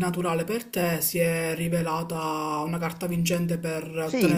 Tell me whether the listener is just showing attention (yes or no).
no